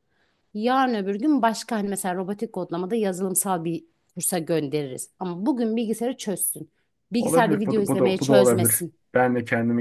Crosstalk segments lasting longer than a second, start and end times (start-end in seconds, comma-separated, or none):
7.2-8.9